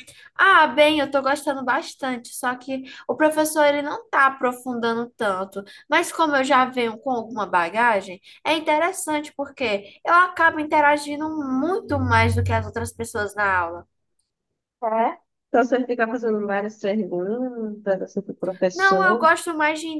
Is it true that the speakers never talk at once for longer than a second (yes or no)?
yes